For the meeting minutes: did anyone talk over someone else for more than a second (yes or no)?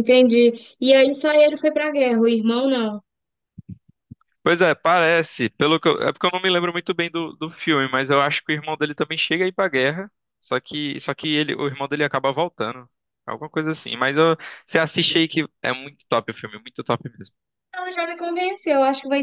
no